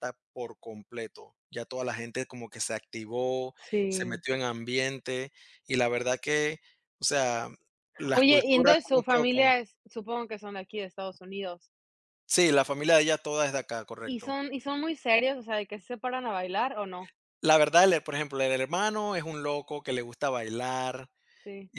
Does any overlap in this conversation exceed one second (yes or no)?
yes